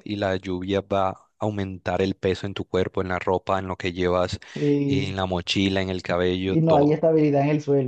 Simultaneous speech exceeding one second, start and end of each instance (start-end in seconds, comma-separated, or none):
none